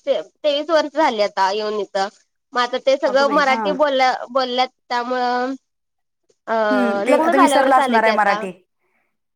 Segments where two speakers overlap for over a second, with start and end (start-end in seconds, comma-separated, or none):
7.1-8.4